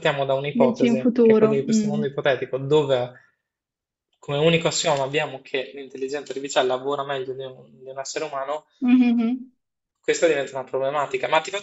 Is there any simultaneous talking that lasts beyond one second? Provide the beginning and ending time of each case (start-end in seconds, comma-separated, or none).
0.5-2.0